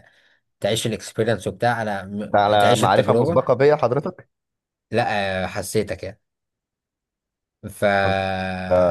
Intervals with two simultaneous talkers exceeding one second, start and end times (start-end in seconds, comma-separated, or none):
2.2-3.5